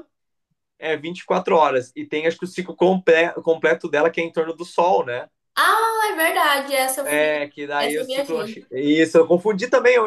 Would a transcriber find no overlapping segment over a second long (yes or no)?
no